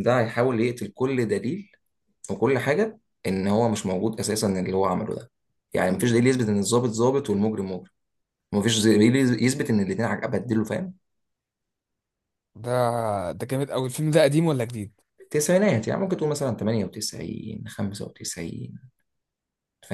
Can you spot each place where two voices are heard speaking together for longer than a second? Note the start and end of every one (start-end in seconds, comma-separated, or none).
none